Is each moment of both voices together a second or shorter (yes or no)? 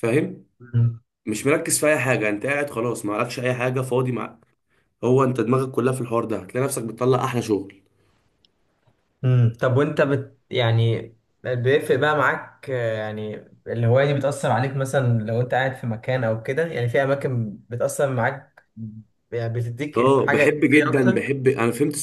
no